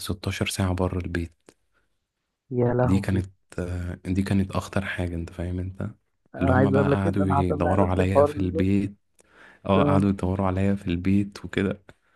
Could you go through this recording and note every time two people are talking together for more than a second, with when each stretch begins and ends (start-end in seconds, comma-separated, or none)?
6.4-8.7